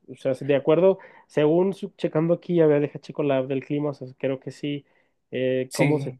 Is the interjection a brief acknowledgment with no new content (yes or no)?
yes